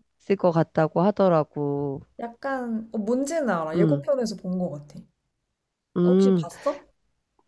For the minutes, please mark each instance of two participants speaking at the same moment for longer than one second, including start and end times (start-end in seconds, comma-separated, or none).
none